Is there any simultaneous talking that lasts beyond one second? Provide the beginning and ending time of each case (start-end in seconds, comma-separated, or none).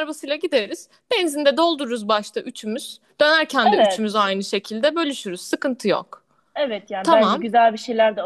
none